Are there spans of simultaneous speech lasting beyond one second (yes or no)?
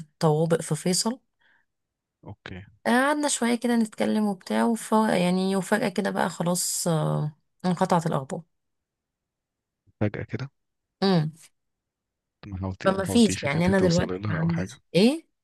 yes